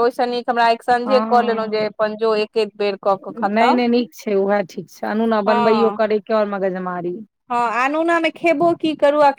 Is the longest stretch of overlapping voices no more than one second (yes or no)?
yes